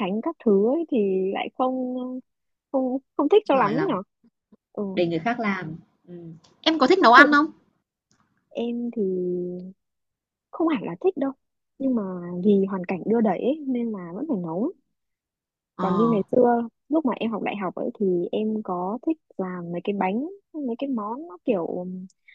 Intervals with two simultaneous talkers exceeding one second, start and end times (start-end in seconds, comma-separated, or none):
none